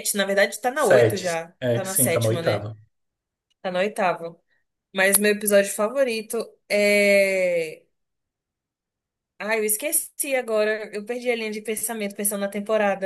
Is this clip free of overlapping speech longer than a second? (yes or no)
no